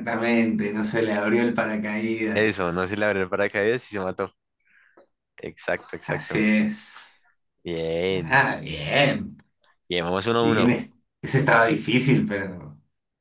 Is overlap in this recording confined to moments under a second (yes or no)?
yes